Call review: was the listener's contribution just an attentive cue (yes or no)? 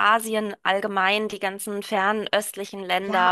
no